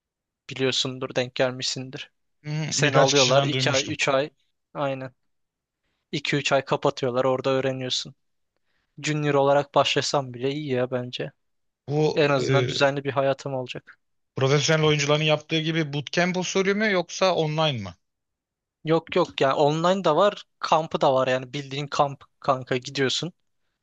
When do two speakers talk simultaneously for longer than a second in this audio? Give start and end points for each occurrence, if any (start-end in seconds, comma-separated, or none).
2.7-4.0